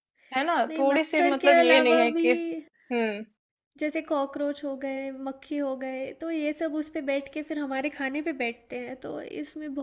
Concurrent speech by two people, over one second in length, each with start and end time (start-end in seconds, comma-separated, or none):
0.7-2.3